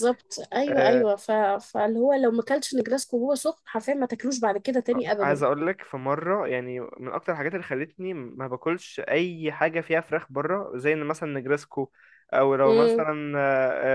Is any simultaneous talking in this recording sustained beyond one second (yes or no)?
no